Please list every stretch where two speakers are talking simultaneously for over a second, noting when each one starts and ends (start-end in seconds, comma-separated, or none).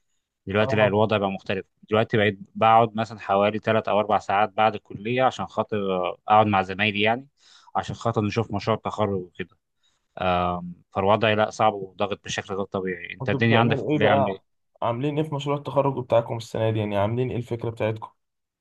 13.2-14.4